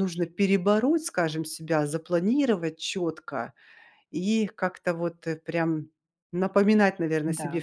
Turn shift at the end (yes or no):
no